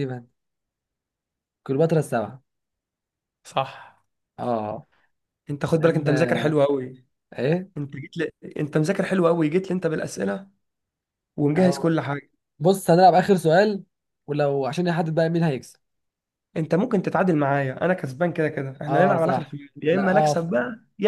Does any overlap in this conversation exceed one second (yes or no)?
yes